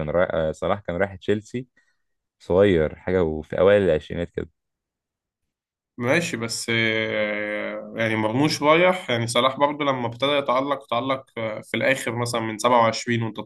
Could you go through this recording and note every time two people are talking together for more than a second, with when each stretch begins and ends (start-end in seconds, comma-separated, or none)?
none